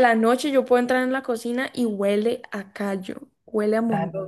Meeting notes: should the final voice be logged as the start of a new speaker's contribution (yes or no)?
yes